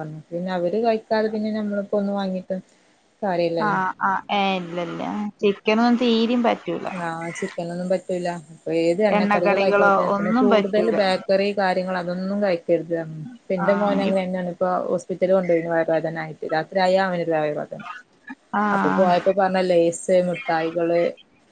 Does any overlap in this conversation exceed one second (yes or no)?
yes